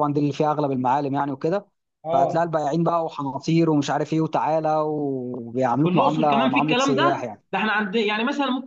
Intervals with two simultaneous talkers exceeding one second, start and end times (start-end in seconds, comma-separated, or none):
5.8-7.4